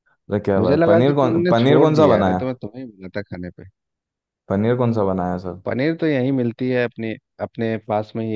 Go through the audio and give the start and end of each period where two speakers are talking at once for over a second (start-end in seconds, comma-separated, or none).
0.6-2.4